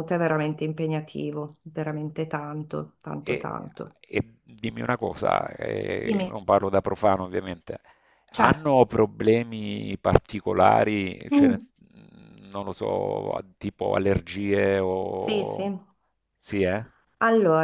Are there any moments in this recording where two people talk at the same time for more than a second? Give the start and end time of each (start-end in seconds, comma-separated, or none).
none